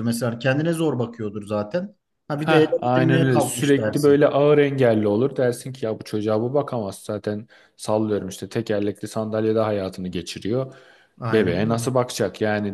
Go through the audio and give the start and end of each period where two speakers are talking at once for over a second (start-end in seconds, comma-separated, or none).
2.3-4.2